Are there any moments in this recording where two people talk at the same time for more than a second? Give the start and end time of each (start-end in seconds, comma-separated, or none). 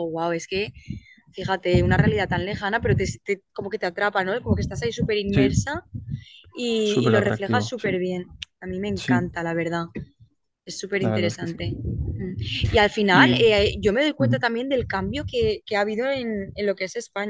6.8-8.0